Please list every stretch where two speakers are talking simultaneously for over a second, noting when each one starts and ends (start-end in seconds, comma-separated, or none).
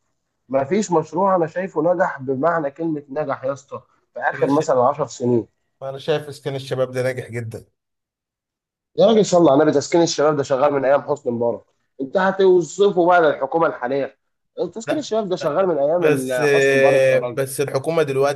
14.9-17.4